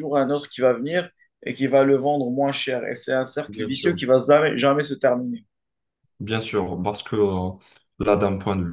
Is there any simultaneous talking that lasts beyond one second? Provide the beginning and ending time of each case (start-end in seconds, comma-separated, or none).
none